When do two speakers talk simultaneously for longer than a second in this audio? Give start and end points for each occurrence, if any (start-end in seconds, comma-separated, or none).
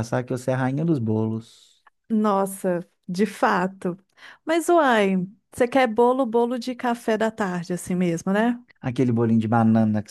none